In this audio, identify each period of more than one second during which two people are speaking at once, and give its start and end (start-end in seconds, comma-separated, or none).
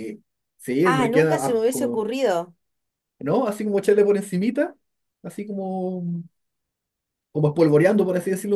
0.8-2.0